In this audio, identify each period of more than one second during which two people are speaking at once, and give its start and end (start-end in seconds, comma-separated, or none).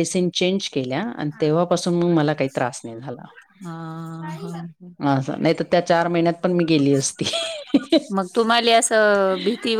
none